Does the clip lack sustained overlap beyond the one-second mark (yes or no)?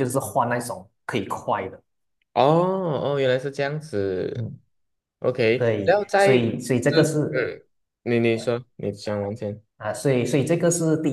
no